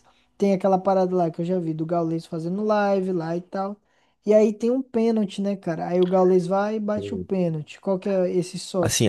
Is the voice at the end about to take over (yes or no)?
yes